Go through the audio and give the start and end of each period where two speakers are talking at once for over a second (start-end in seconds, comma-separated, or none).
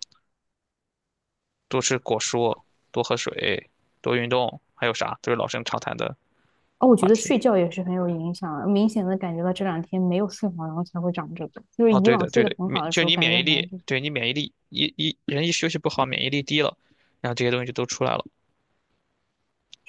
11.9-13.8